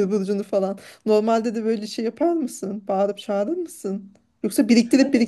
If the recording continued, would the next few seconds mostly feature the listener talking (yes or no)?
no